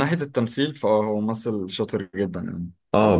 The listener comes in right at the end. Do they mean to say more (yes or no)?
yes